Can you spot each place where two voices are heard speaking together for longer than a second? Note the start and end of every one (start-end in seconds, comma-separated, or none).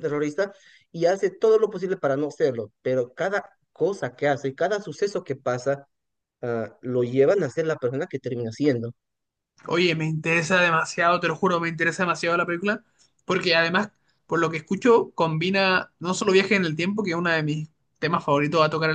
none